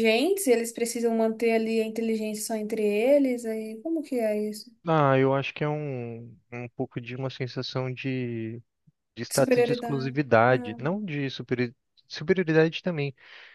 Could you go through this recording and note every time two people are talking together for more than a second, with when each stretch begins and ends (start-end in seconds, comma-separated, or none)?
9.3-10.8